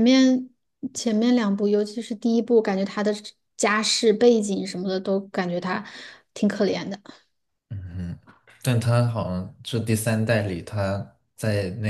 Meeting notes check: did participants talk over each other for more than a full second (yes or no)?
no